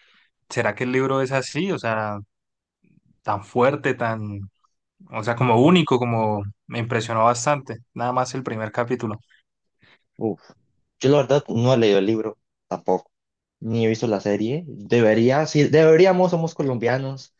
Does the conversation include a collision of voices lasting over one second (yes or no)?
no